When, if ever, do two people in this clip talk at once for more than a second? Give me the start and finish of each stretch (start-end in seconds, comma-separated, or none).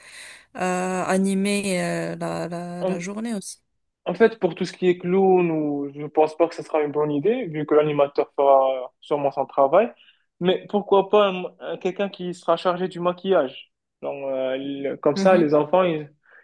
none